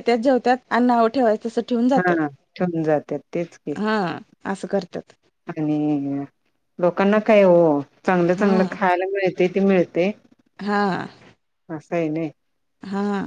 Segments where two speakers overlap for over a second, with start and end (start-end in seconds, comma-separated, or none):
none